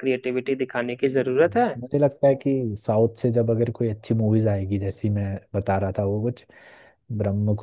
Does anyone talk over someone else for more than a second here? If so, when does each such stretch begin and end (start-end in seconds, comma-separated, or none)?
none